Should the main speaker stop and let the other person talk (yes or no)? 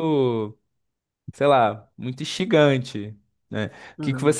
no